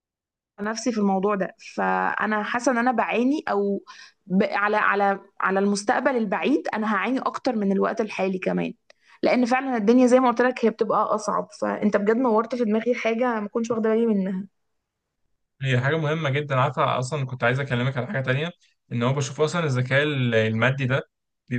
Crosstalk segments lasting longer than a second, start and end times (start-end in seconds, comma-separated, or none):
none